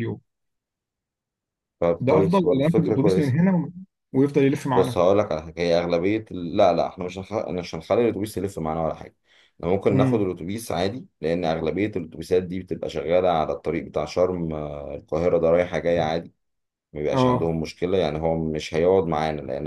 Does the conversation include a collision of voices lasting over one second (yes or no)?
yes